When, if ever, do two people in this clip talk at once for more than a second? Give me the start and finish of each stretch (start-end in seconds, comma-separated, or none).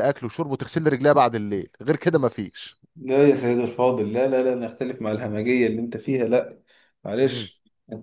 none